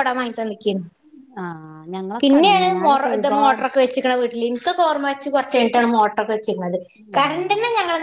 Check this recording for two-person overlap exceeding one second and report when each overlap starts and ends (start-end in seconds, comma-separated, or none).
2.2-3.6